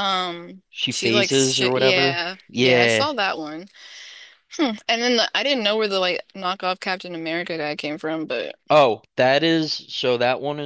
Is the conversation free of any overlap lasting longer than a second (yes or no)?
no